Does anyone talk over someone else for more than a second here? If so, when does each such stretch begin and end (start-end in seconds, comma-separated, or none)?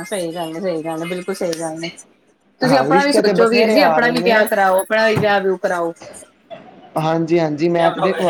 2.7-4.4